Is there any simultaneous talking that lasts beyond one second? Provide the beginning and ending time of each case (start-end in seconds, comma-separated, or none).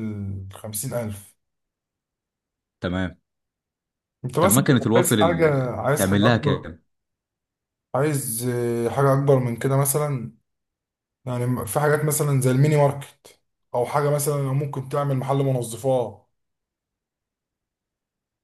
4.4-6.7